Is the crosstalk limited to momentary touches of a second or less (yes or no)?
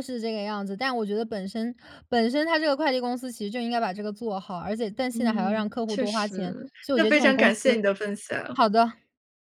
no